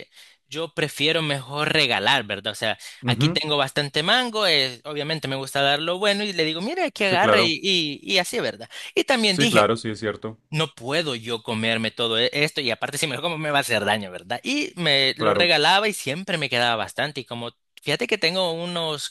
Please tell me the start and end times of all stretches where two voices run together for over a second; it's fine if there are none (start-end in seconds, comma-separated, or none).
none